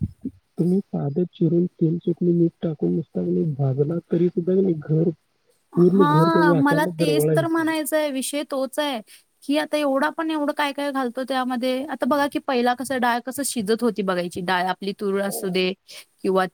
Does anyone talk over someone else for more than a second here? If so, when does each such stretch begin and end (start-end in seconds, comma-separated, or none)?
5.9-7.7